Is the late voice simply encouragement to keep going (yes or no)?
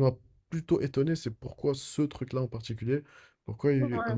yes